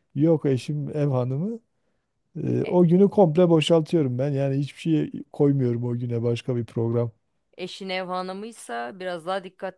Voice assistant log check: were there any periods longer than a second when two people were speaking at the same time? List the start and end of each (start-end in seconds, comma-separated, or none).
none